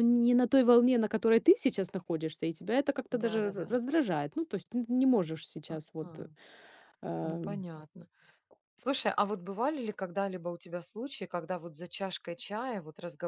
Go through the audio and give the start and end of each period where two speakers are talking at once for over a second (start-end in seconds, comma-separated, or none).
none